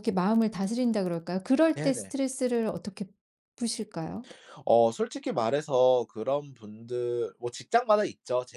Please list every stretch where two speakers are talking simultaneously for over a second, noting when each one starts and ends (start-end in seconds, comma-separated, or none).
none